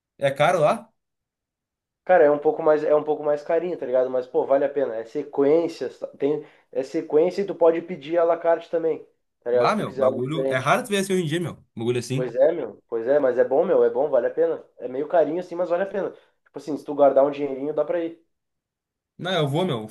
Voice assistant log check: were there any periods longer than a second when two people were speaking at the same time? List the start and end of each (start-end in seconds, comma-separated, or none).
9.5-10.8